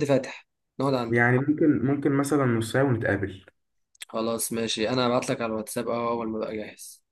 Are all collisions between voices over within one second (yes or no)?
yes